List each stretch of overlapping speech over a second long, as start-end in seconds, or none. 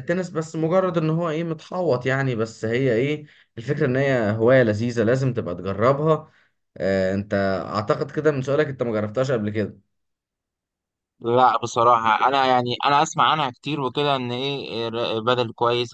none